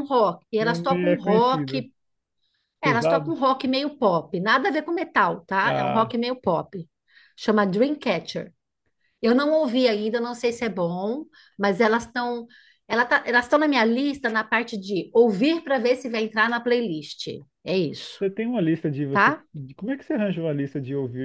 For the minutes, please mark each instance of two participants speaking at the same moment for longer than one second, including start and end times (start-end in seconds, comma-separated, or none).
0.6-1.8